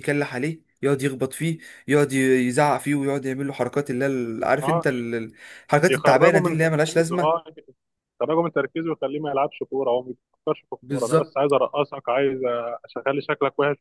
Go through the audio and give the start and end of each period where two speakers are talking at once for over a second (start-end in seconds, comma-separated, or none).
5.9-7.4